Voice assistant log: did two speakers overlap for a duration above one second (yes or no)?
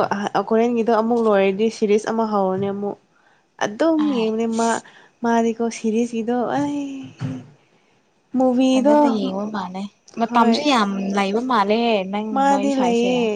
no